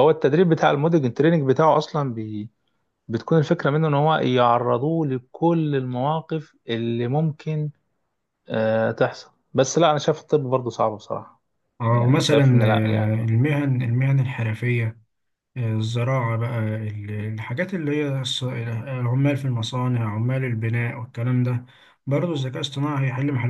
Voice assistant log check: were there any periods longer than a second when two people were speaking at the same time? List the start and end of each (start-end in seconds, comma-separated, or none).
11.9-13.2